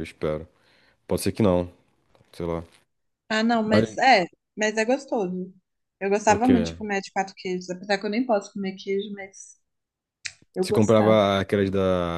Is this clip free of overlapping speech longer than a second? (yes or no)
yes